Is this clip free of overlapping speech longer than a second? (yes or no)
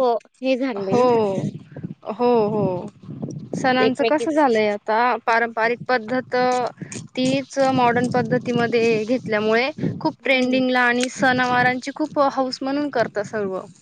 yes